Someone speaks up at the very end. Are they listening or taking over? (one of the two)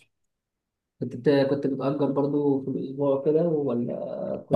taking over